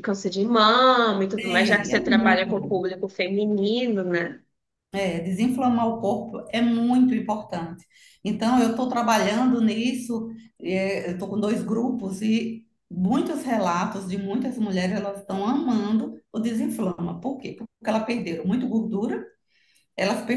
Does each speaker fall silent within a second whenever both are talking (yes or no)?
no